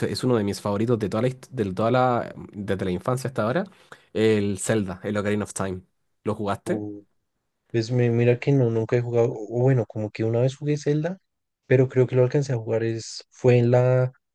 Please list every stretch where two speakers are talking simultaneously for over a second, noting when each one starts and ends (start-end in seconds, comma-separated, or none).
none